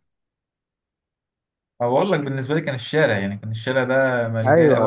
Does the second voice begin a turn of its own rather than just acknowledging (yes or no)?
yes